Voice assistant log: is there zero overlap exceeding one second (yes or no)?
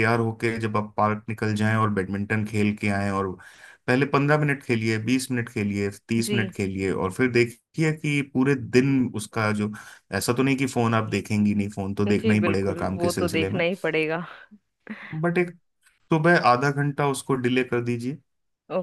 no